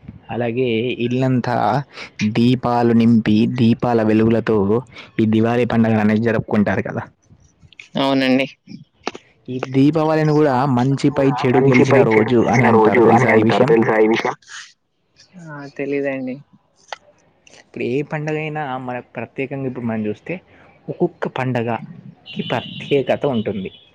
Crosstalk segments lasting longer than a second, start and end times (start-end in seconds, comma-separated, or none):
11.5-13.7